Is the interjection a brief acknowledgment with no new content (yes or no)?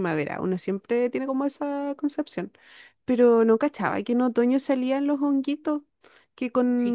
yes